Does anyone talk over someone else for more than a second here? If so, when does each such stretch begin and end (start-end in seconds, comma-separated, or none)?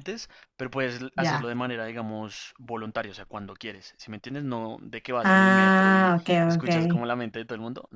5.2-6.7